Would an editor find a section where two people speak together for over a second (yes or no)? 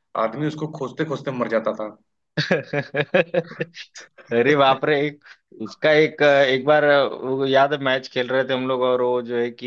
no